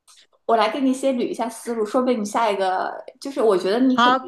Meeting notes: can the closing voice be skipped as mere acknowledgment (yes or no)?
yes